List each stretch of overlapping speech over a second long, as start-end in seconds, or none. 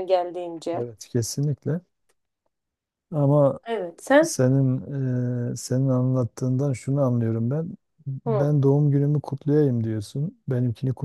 none